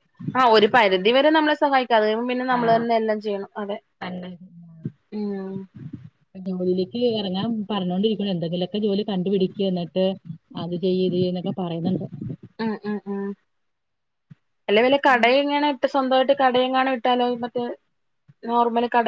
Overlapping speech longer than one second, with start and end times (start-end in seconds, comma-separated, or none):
none